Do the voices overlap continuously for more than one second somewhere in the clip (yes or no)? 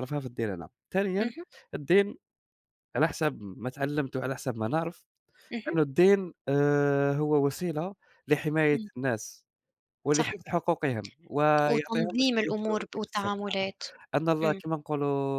yes